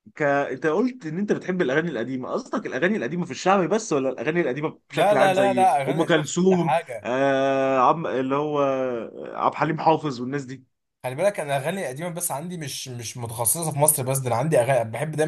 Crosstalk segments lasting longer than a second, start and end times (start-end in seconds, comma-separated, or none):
4.9-7.1